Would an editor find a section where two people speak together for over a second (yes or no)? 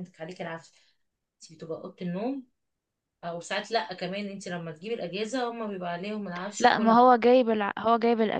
no